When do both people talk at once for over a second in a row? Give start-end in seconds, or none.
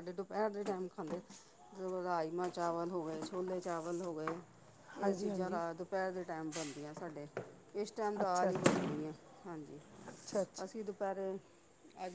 none